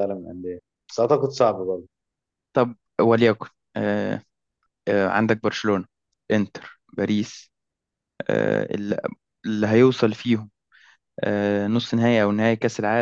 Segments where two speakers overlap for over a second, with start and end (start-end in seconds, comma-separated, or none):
none